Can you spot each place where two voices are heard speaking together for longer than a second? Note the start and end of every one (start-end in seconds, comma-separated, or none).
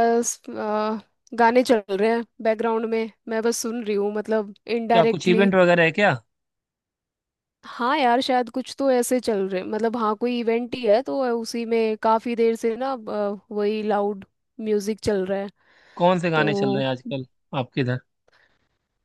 none